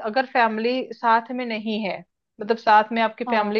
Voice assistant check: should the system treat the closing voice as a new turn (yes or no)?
no